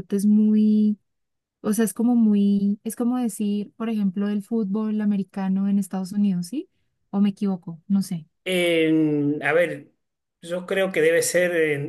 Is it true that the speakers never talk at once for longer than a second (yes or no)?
yes